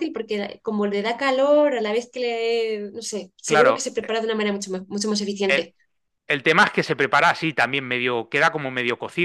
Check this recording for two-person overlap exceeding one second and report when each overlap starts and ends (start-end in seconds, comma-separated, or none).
none